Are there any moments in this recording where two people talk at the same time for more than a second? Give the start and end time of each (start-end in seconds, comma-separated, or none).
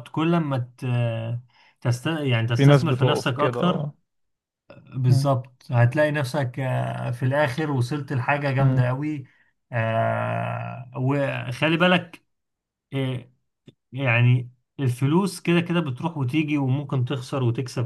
2.6-3.9